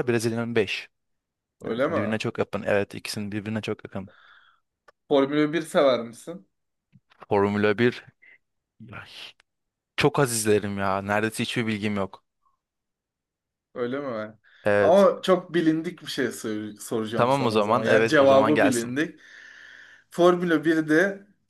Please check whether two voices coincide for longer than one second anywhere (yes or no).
yes